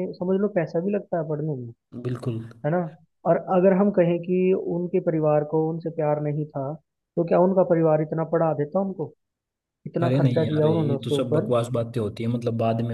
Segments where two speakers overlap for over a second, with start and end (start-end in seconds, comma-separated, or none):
10.0-11.5